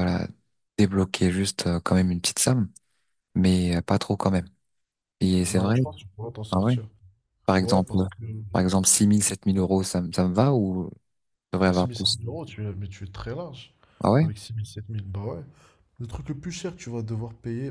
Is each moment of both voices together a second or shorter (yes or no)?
yes